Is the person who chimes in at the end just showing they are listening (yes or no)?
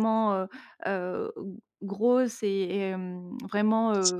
yes